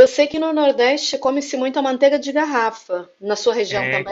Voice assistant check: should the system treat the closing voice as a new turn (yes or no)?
yes